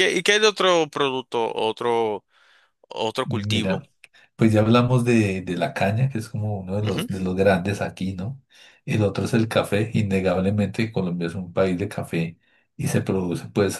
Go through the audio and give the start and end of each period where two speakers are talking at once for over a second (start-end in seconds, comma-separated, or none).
none